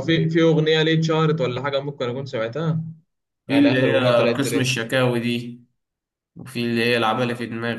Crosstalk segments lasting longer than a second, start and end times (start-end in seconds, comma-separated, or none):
3.5-4.8